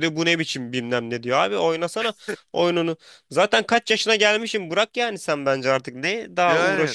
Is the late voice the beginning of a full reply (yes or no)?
yes